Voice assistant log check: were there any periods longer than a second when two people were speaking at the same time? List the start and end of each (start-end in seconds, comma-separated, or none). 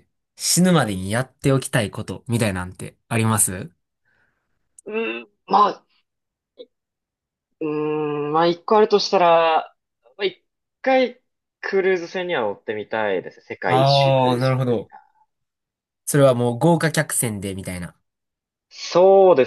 13.6-14.9